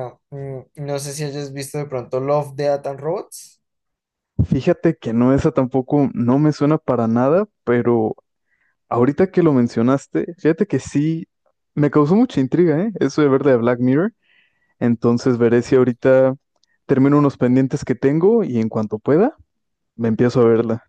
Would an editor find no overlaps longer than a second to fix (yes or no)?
yes